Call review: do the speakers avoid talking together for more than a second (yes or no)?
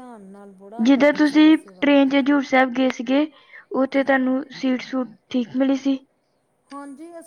no